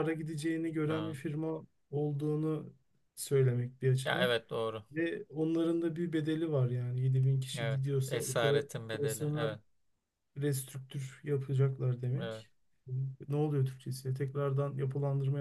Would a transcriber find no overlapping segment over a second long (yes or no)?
no